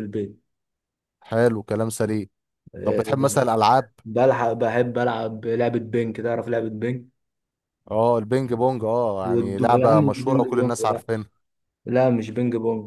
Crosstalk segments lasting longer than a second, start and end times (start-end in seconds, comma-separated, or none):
9.3-11.0